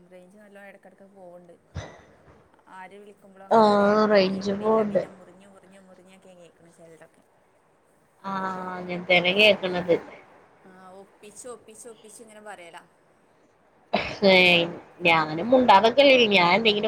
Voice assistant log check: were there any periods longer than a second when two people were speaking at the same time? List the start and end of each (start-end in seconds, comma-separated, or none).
3.6-5.0